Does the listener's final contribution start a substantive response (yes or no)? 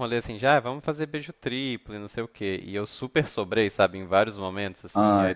no